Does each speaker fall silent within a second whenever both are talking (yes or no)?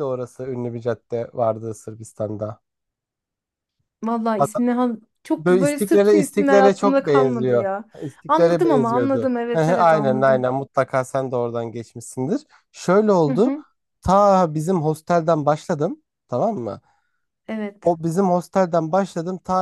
no